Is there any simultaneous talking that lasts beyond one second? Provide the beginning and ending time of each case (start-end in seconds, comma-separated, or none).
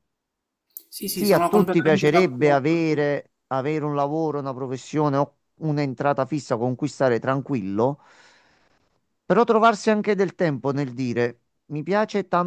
1.1-3.1